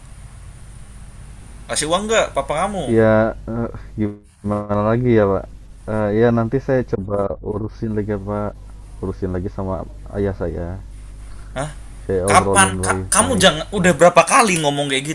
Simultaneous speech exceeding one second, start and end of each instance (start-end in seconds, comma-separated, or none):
12.2-13.9